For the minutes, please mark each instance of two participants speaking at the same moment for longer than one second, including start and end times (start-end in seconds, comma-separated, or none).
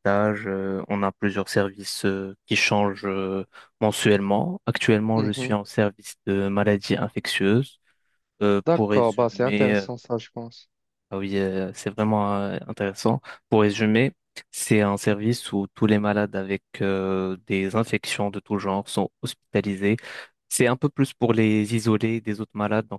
8.6-9.9